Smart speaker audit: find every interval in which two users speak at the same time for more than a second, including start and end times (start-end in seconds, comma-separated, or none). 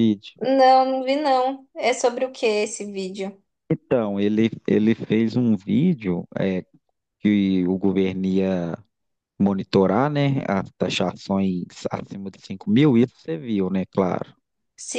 none